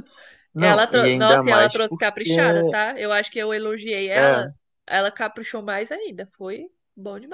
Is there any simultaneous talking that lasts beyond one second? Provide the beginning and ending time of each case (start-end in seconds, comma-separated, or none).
0.6-2.3